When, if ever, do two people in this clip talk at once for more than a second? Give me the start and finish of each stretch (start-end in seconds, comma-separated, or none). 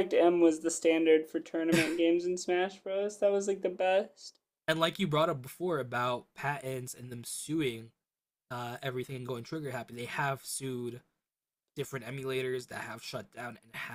none